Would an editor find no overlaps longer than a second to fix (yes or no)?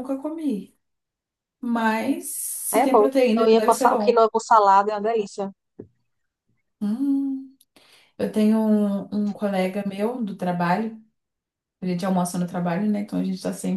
no